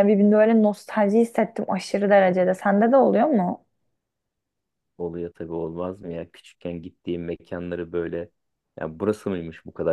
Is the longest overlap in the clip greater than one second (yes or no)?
no